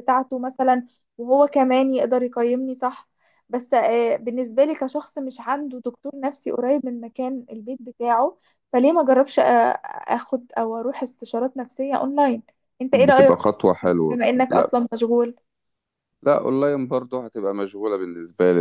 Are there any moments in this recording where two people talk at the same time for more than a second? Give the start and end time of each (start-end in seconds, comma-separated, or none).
12.9-14.8